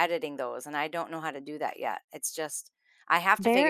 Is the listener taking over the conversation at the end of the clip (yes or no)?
yes